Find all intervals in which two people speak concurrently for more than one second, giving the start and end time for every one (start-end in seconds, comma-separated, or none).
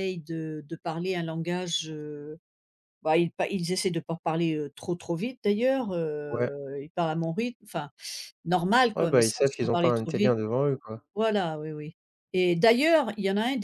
8.9-10.4